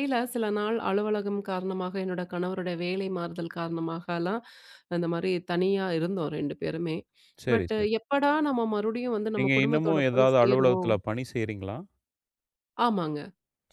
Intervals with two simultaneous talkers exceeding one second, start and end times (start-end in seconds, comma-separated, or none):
9.4-11.0